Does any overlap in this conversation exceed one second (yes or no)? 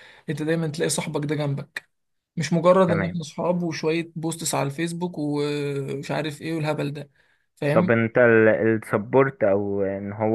no